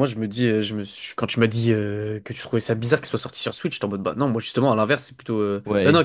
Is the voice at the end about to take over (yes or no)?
yes